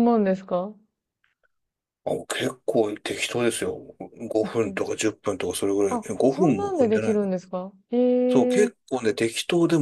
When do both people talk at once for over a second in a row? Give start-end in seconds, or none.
5.9-7.3